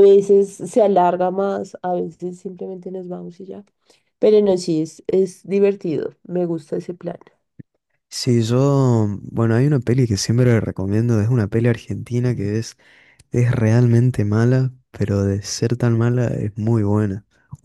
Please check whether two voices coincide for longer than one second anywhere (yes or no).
no